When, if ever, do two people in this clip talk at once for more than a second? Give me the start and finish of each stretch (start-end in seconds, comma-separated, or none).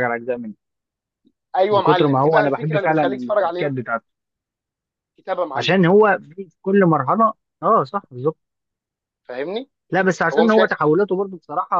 1.7-3.8